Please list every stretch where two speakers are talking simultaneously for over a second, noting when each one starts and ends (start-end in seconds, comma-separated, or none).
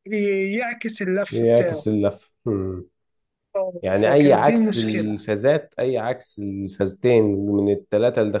3.8-5.3